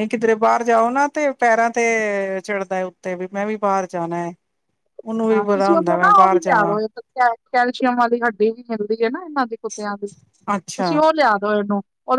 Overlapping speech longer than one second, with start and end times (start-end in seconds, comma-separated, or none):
5.3-6.8